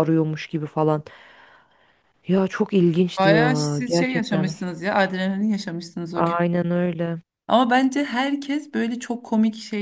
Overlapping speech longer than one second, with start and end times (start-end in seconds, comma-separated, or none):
3.2-4.5